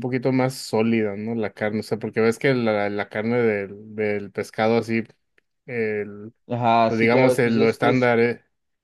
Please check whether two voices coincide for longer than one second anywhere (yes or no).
yes